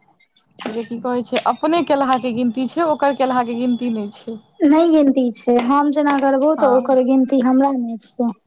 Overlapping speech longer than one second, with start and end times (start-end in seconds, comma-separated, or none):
none